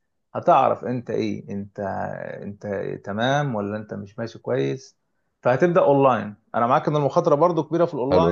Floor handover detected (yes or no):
yes